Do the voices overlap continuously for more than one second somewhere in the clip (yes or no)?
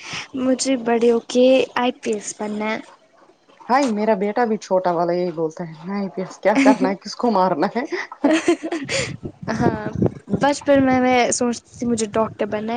no